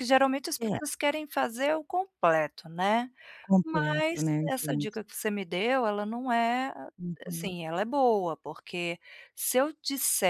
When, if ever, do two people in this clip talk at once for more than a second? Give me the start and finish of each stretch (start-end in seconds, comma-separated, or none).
3.6-4.9